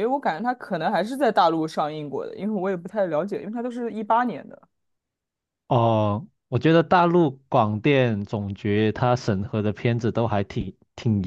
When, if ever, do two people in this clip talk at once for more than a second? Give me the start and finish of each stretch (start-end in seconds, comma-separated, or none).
none